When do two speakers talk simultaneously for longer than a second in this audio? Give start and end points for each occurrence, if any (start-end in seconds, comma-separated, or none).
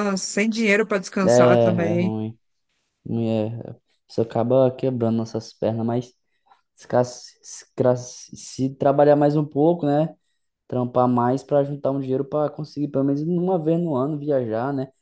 none